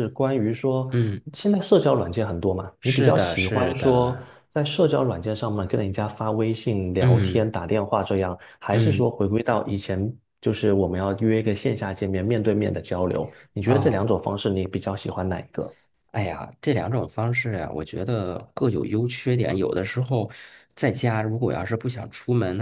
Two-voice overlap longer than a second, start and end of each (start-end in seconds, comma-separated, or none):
2.8-4.3